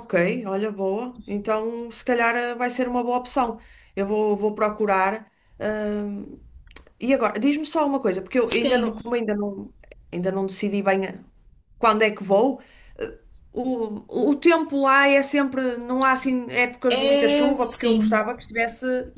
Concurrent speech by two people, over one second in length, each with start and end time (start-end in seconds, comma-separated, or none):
16.9-18.3